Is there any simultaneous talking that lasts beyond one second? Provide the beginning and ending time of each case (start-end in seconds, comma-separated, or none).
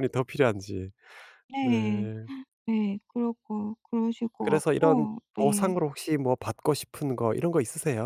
4.4-5.8